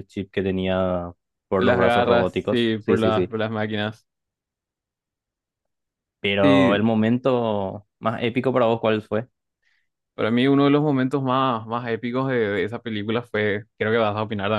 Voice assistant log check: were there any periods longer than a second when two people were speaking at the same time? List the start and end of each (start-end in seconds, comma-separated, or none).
1.6-3.3